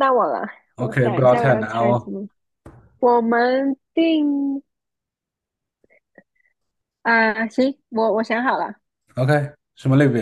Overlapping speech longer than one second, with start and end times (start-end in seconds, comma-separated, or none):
0.8-2.1